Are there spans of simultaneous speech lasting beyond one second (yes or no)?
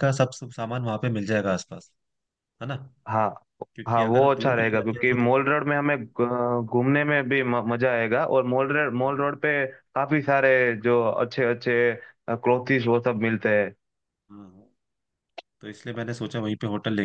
yes